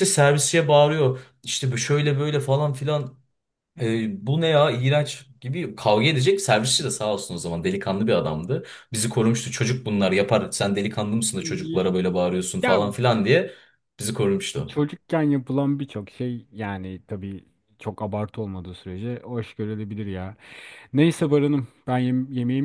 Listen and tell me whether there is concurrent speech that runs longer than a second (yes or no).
no